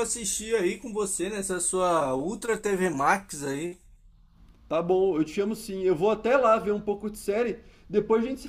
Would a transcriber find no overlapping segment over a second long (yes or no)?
yes